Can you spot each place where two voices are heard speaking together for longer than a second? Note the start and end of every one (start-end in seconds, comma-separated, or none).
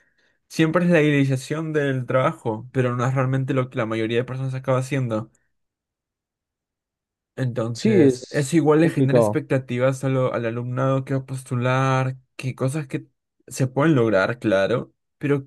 7.7-9.4